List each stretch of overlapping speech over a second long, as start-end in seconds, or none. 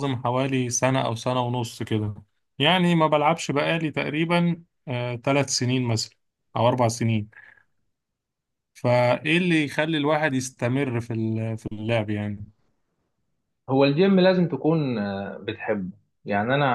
none